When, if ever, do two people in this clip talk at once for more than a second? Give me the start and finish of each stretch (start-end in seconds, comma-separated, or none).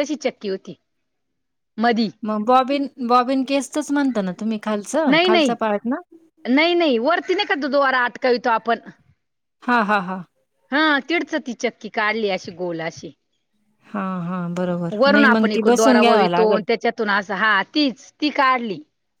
15.0-16.6